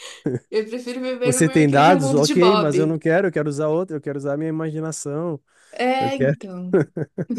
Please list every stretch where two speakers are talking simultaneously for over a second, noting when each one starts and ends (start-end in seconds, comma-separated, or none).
1.2-2.9